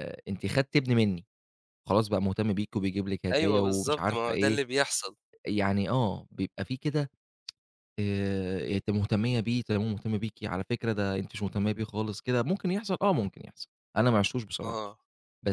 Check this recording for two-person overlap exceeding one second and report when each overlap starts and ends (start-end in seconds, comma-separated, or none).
3.3-4.6